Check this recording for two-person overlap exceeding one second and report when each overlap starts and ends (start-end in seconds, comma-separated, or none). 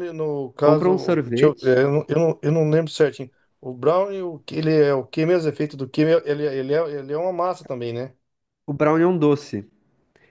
0.6-1.8